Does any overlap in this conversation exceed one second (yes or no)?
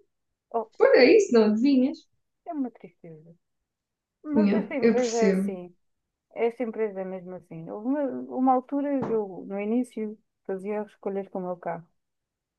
yes